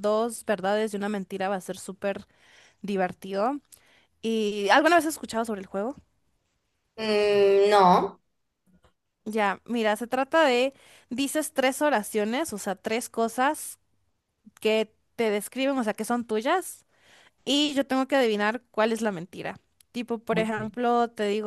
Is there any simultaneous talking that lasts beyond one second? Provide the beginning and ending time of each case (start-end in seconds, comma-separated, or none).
none